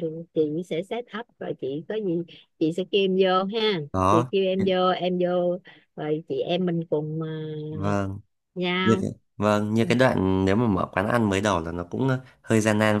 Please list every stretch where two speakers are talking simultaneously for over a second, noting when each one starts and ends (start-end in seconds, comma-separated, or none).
none